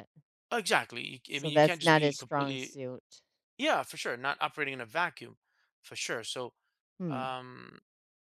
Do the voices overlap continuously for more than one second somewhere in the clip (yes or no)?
yes